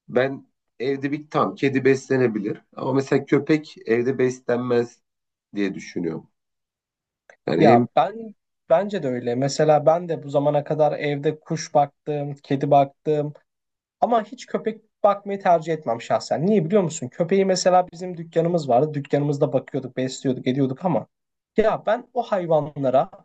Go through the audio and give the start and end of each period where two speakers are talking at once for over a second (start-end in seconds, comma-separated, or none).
none